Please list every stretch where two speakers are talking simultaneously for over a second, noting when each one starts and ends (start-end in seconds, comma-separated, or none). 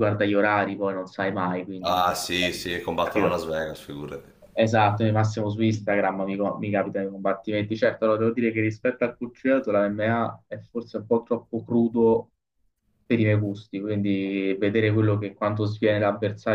none